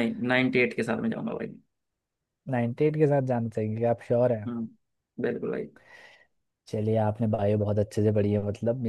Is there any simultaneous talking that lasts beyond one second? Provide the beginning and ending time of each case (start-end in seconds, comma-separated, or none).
none